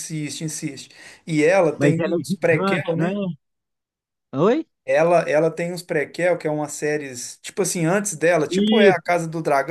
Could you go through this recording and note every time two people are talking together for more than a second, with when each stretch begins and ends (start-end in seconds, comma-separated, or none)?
1.8-3.2